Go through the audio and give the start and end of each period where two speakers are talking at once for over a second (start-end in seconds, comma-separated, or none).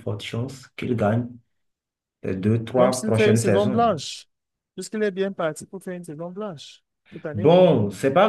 2.8-4.0